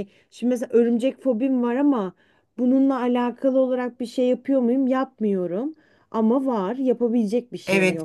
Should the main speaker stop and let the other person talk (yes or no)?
yes